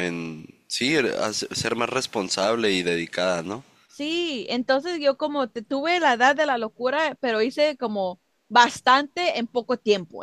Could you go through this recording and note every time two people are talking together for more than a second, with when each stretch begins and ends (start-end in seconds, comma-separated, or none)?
none